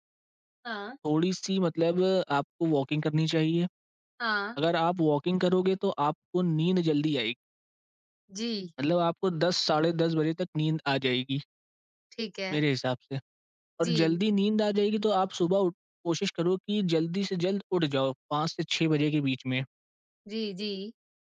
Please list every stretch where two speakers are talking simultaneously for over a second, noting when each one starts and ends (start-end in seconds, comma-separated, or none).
none